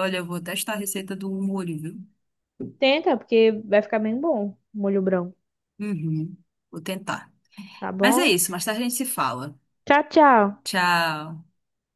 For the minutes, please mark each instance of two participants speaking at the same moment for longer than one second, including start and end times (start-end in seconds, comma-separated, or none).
none